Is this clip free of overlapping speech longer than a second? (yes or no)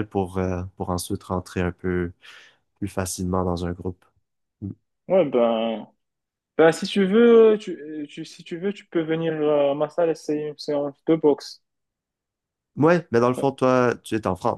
yes